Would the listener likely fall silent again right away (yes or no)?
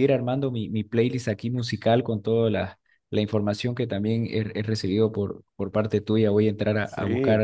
yes